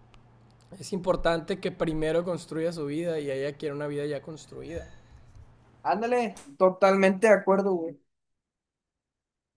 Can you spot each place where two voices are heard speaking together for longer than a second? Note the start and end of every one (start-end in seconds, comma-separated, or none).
none